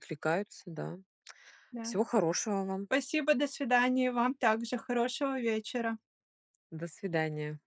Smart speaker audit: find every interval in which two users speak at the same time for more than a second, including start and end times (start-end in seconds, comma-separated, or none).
none